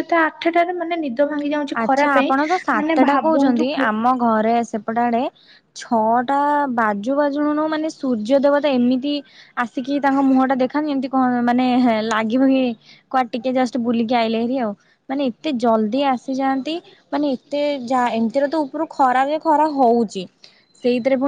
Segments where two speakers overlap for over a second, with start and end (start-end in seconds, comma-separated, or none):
1.8-3.7